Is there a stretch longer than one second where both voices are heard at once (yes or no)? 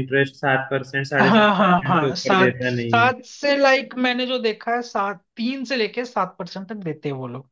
yes